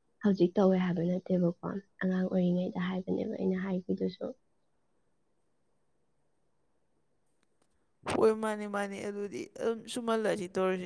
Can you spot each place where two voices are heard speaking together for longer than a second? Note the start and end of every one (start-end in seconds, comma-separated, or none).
none